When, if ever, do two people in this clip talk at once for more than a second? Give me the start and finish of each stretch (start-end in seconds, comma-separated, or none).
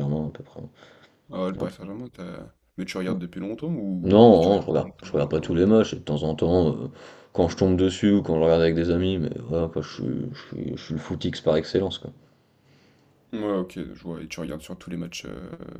4.0-5.6